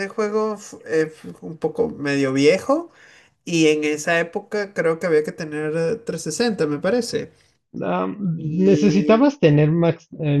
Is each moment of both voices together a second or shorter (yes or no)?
yes